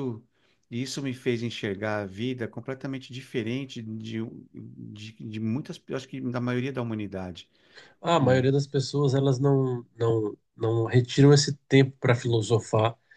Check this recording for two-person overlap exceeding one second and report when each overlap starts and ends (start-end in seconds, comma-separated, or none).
none